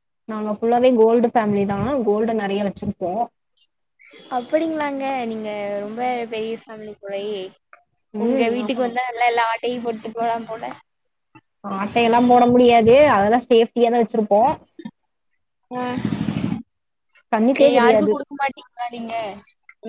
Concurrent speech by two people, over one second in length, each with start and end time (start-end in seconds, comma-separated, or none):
none